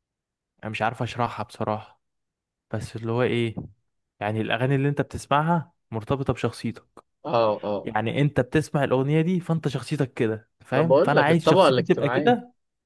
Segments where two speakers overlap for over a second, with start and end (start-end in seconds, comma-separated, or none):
10.7-12.3